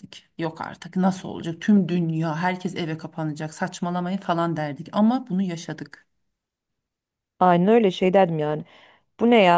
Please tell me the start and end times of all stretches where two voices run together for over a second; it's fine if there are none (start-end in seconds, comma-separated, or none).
none